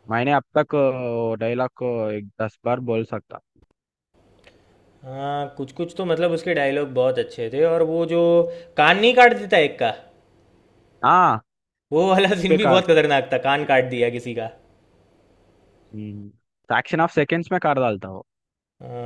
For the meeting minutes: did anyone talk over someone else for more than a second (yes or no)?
no